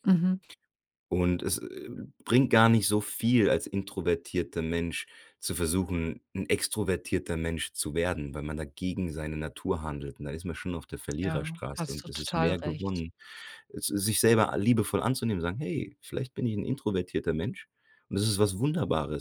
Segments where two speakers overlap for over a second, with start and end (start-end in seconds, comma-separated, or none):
11.2-13.0